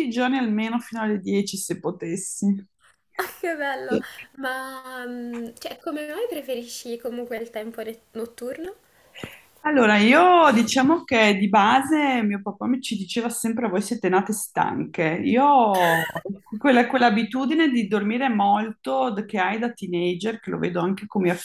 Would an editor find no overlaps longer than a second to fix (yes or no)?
yes